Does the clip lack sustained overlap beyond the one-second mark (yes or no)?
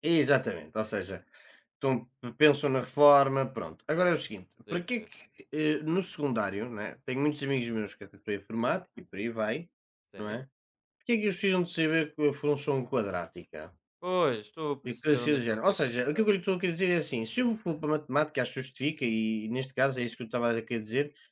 no